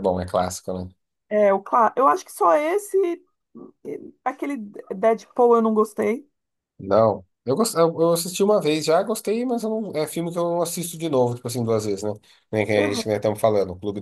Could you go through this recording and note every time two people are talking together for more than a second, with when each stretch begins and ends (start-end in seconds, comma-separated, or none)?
none